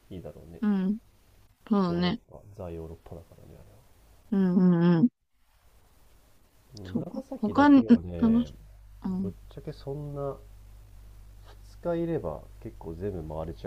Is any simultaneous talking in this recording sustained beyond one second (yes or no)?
yes